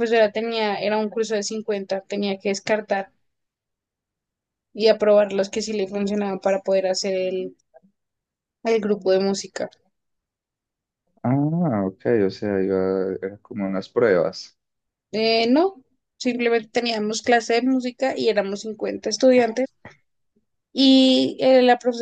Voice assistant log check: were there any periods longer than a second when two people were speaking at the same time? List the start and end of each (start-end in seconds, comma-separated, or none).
none